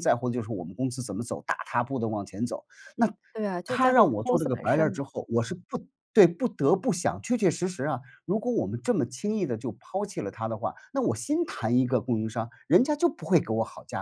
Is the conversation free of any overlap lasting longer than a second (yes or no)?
no